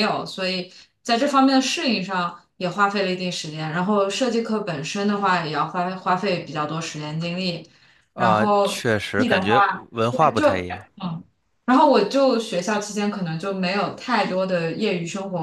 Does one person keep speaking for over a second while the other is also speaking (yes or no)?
yes